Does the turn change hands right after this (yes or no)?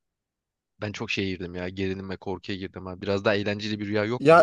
yes